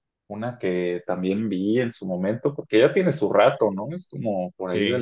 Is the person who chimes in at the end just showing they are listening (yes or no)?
yes